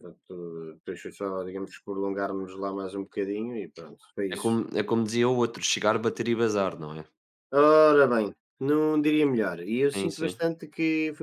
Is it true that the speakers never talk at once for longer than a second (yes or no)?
yes